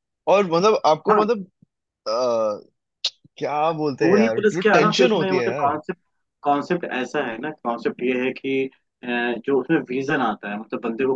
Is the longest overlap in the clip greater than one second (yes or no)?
yes